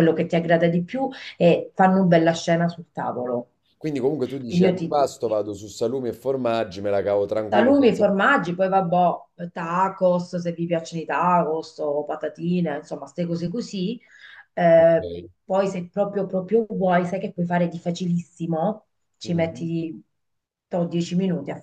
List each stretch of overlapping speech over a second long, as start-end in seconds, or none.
none